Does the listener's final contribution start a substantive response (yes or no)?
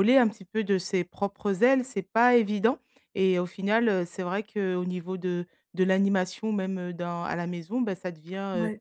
no